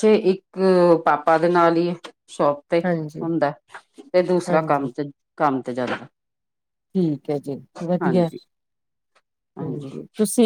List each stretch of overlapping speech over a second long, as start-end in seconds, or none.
none